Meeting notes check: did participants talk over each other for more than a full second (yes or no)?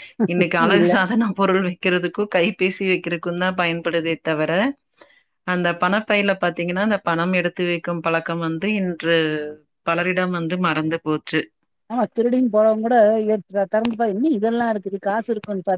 no